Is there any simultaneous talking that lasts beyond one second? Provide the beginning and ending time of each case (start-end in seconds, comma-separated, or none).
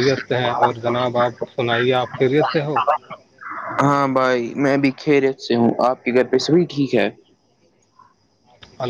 none